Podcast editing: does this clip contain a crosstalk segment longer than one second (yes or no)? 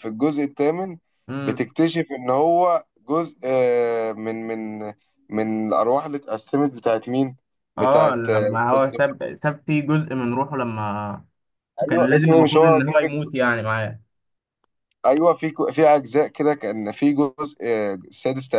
yes